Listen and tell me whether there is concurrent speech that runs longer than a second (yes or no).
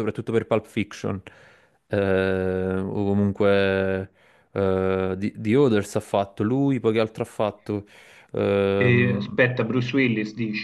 no